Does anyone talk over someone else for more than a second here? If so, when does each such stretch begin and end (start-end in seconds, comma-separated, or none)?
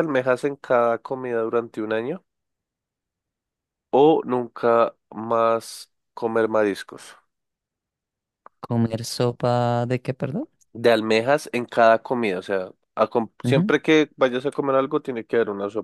none